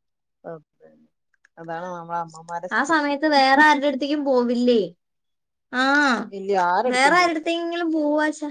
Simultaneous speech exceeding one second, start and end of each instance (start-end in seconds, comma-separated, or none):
none